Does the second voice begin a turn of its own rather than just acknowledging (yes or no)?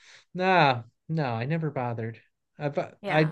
no